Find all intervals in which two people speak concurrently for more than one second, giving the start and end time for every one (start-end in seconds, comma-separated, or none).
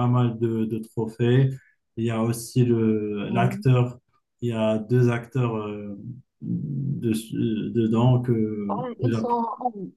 none